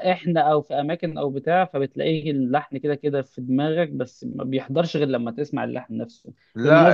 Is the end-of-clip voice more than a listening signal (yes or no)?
no